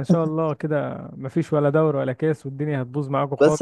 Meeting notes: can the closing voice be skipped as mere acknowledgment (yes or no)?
no